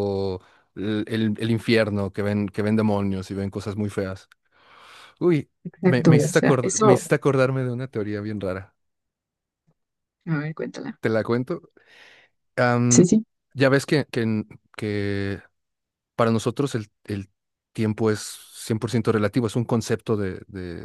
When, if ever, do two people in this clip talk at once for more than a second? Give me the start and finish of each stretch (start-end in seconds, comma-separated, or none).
5.6-7.1